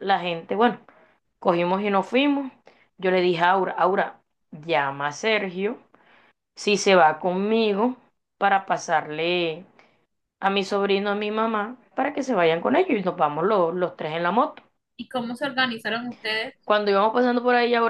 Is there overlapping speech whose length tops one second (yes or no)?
no